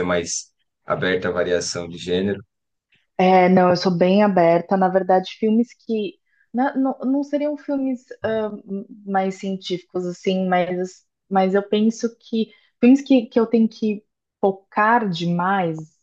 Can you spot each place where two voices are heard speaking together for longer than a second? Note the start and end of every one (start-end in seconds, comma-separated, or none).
none